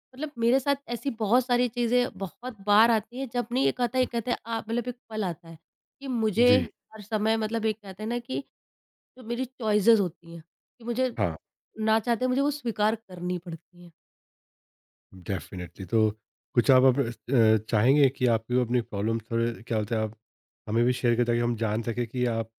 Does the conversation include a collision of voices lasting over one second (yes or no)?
no